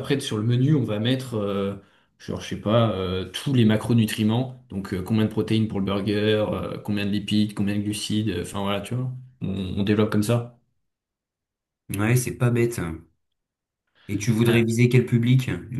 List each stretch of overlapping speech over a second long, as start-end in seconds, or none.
none